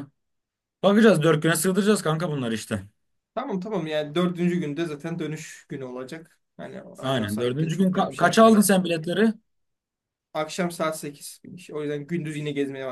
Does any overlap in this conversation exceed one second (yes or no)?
yes